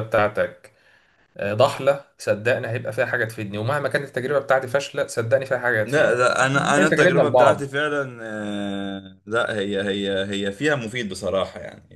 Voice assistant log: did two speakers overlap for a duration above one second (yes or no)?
yes